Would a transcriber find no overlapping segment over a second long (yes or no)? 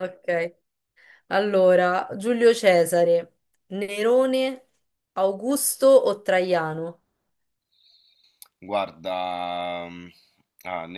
yes